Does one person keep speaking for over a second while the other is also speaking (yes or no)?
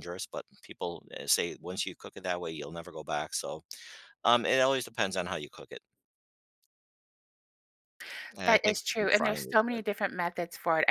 yes